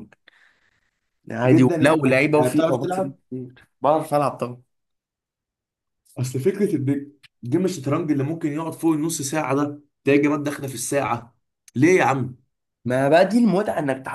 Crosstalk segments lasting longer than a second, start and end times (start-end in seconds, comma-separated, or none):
1.4-3.2